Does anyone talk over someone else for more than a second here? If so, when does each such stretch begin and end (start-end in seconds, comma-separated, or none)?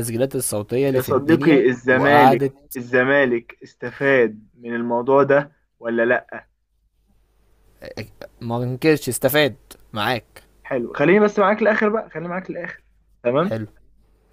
0.9-2.8